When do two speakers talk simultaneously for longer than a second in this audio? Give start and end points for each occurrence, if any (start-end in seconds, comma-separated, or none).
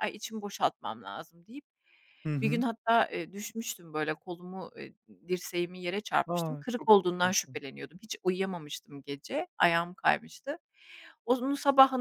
6.3-7.6